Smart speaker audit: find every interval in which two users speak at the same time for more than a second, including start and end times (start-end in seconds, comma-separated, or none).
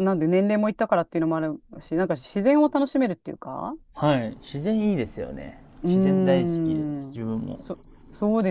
5.8-7.6